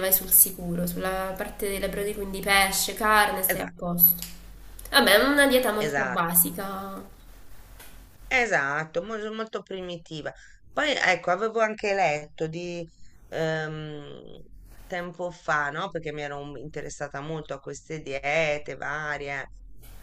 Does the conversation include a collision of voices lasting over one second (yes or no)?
no